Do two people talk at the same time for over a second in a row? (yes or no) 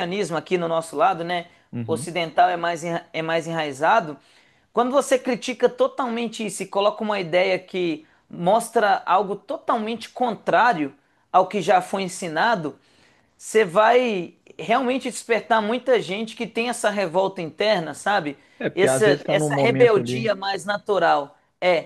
yes